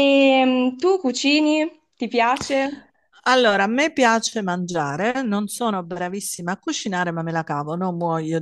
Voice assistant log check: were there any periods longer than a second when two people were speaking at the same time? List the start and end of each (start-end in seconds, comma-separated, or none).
none